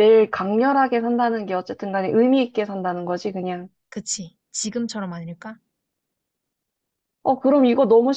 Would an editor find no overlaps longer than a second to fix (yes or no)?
yes